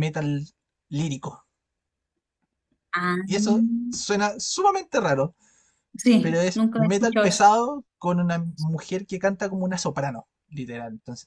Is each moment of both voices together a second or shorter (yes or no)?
no